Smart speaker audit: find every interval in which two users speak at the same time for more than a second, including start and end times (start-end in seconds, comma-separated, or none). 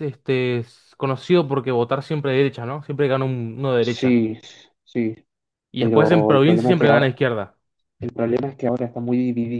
5.8-7.2